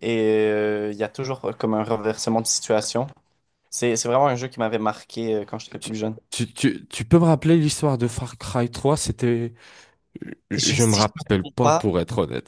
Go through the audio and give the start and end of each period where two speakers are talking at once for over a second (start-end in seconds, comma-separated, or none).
10.5-11.8